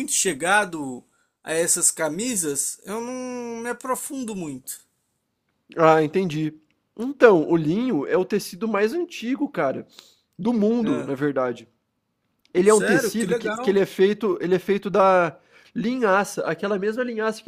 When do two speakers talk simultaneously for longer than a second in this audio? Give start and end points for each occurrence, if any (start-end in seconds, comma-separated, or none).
12.6-13.9